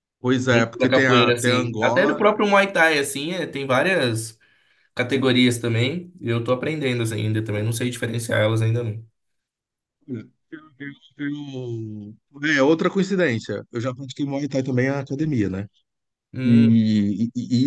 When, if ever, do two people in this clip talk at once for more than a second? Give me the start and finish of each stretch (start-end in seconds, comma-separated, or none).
0.5-2.2